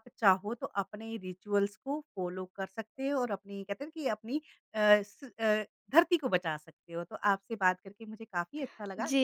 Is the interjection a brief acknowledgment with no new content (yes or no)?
no